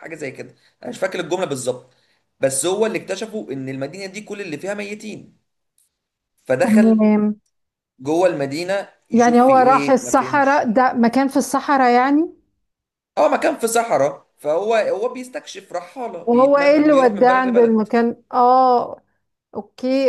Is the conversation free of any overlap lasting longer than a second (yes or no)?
no